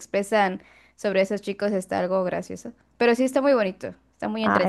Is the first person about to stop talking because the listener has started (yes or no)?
yes